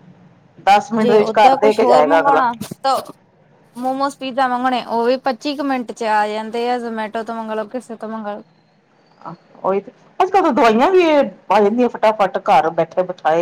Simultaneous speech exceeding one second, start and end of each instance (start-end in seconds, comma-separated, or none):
1.0-2.4